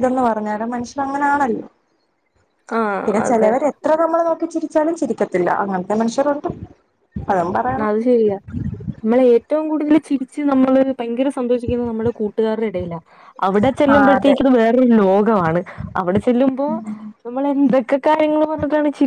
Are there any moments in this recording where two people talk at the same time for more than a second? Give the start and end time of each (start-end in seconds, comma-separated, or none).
none